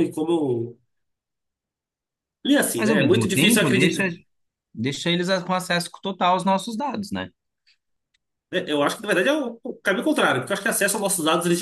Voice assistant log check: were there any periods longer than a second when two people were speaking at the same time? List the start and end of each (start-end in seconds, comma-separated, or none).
2.8-4.0